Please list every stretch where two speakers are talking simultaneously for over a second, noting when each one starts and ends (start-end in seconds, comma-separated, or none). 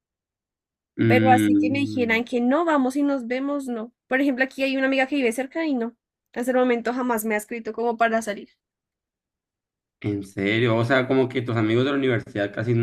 1.1-2.3